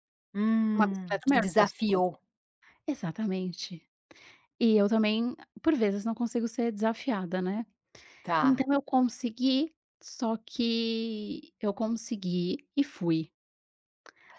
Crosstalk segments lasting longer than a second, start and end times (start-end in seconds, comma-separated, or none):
0.8-2.0